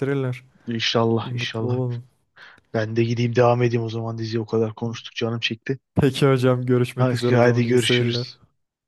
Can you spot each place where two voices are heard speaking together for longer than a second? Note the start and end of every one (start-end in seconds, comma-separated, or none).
7.0-8.3